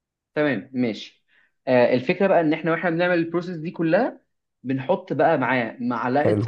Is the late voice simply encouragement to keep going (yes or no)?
yes